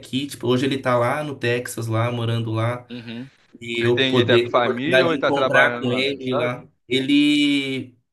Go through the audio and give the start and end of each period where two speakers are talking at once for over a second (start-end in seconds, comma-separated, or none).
3.8-6.6